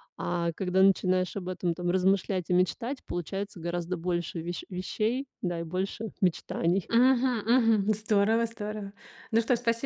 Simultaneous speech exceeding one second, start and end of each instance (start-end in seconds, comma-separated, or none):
none